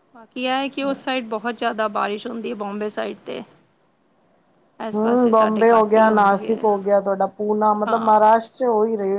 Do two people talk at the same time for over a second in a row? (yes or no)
yes